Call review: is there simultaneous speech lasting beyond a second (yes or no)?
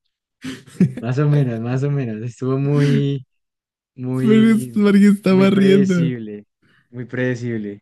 yes